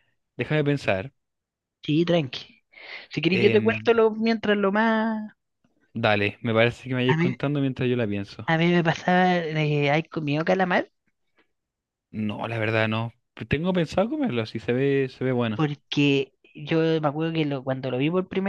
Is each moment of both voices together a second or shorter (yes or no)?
yes